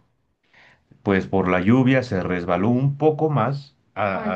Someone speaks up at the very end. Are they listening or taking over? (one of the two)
listening